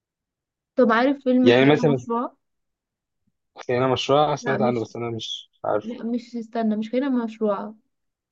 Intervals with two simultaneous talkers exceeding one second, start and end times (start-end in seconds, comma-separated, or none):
none